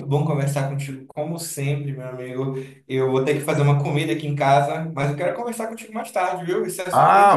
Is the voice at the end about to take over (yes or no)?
yes